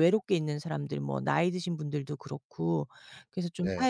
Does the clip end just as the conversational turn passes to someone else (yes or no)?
no